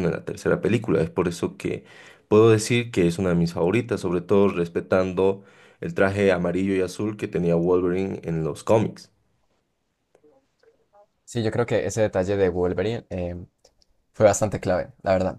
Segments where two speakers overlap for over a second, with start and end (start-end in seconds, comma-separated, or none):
none